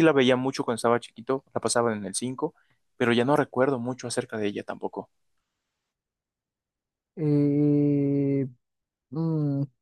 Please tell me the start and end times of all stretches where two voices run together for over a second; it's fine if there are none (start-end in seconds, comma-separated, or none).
none